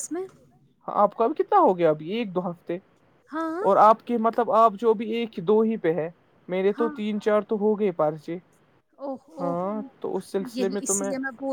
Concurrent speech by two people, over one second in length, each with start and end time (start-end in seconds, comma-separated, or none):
none